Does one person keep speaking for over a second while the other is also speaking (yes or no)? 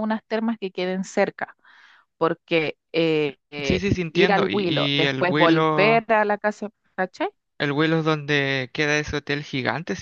yes